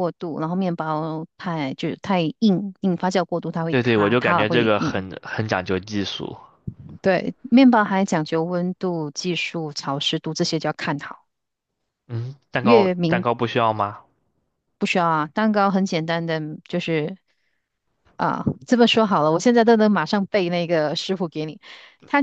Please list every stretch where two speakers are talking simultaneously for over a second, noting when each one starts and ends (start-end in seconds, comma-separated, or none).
3.7-5.0